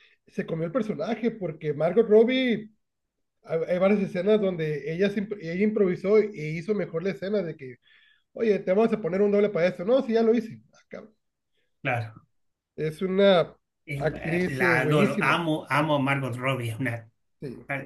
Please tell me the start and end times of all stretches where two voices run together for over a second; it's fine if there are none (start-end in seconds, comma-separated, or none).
13.9-15.4